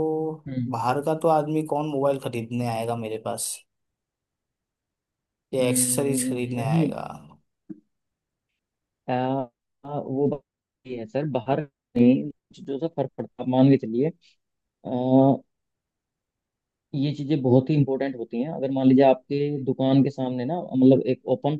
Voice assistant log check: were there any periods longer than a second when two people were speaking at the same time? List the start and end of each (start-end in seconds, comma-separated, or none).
5.6-6.9